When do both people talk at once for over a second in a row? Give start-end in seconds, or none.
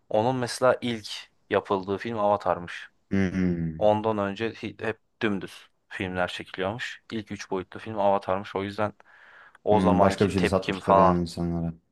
9.7-11.2